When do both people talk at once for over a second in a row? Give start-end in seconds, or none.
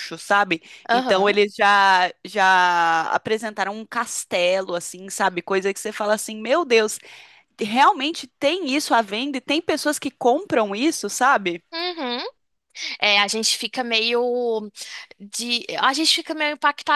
none